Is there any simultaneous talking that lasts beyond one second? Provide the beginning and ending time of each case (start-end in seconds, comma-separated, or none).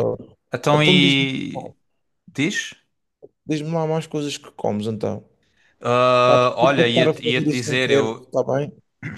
6.2-8.3